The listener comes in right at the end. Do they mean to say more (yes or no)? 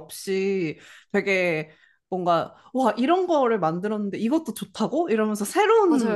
no